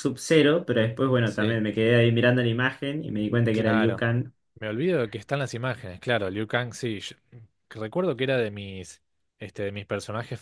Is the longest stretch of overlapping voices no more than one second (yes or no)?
yes